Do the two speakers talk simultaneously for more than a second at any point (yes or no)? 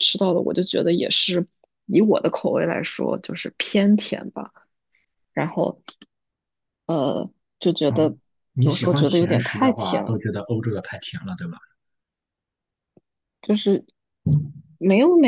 yes